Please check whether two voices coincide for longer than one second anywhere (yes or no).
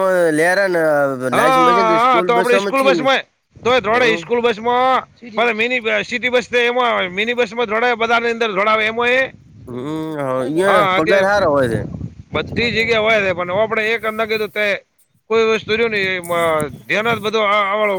yes